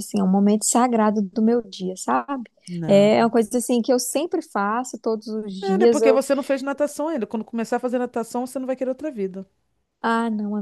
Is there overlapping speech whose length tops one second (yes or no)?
no